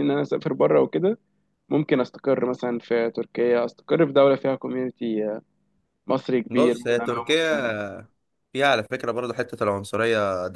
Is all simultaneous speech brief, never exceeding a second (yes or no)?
no